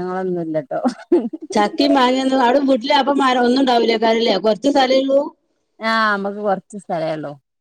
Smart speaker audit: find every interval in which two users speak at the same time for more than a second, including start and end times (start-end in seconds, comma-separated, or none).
none